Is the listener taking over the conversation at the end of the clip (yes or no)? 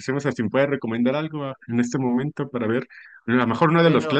no